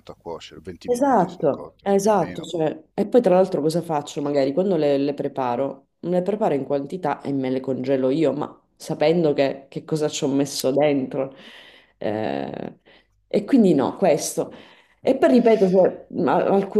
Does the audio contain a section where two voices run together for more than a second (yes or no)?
yes